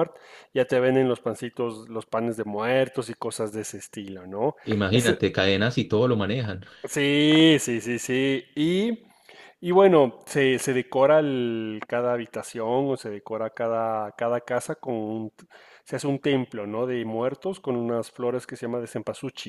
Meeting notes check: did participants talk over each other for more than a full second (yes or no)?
no